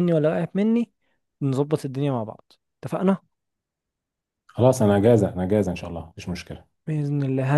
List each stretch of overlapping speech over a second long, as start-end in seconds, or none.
none